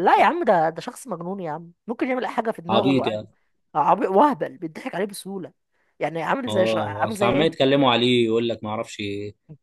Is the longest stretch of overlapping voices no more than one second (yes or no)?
no